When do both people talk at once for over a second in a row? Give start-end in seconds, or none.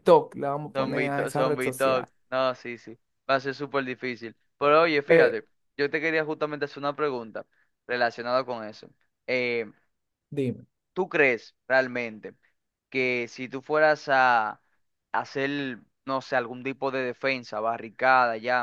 0.8-2.1